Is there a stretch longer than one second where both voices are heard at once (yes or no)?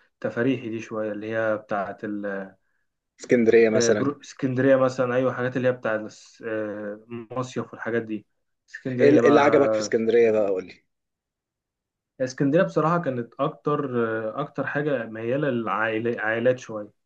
yes